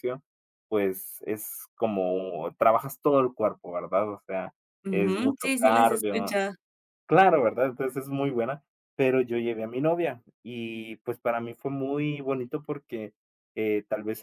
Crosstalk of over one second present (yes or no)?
yes